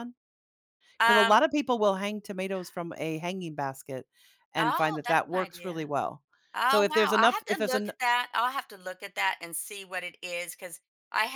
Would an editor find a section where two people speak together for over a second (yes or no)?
yes